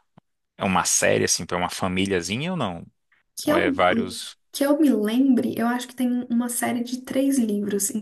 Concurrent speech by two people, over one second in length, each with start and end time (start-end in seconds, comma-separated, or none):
none